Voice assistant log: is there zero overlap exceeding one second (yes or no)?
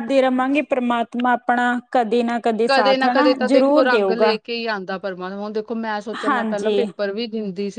no